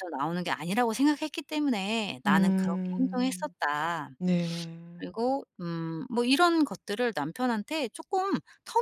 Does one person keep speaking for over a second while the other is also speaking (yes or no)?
yes